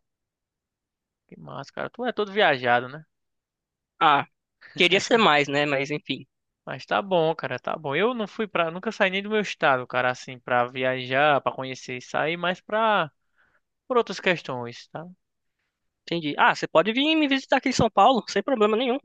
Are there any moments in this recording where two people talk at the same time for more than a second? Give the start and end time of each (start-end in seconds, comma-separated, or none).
none